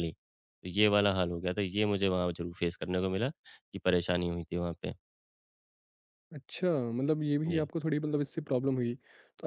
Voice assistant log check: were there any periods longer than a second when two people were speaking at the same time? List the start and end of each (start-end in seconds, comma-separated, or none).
none